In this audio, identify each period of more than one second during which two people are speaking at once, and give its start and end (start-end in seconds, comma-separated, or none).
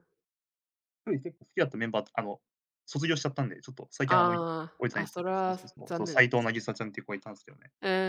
4.1-6.5